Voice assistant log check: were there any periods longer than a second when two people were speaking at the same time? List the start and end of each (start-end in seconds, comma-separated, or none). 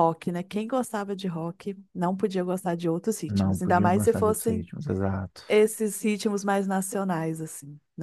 3.3-4.7